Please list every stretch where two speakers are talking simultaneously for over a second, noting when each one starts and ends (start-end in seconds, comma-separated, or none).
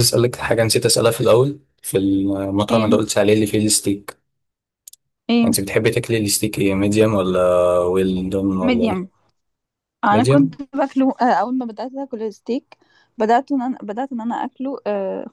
none